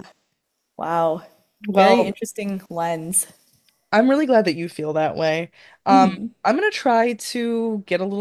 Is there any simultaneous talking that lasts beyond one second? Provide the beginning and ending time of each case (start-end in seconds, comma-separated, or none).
none